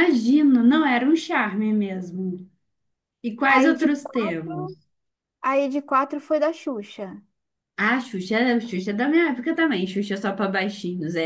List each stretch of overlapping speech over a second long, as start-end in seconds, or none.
3.5-4.8